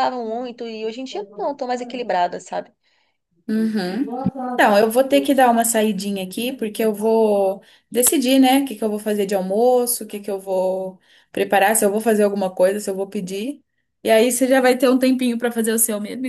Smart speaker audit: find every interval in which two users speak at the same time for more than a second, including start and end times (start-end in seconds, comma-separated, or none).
none